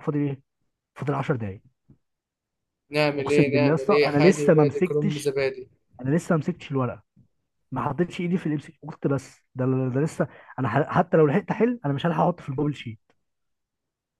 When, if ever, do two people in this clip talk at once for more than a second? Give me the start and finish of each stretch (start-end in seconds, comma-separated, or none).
3.2-5.3